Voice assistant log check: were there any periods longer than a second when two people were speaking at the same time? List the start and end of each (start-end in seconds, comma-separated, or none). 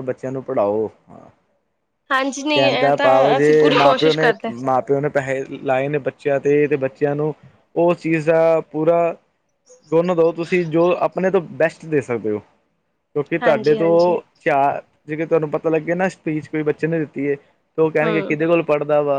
2.5-4.5